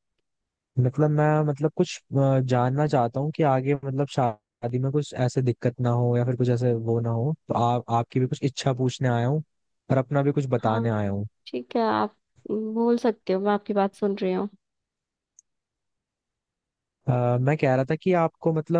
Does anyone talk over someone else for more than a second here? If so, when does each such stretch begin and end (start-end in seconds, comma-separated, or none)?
none